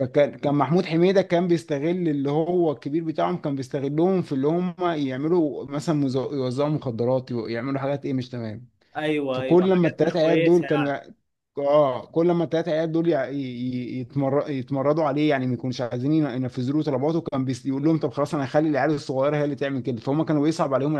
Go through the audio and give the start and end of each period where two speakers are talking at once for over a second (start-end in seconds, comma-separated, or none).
9.3-10.7